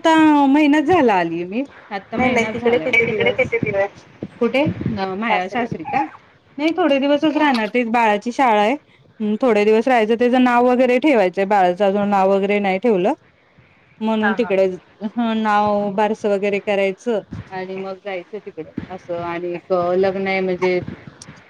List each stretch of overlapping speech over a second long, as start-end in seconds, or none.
2.2-3.5